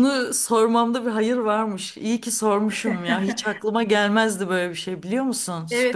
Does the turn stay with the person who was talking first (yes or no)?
no